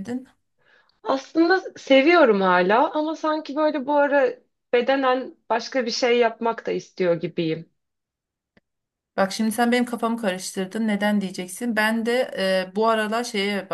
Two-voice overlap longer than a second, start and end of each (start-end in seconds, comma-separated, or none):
none